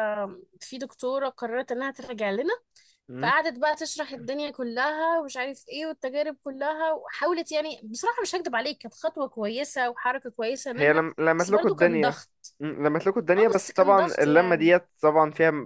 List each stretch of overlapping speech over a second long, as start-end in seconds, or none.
10.7-12.2, 13.4-14.7